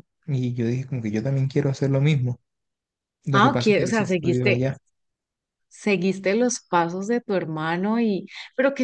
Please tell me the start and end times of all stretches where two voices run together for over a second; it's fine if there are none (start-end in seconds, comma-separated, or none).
3.3-4.6